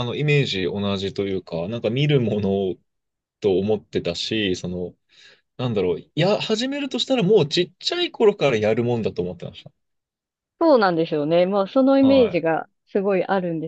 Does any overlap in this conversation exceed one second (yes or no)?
no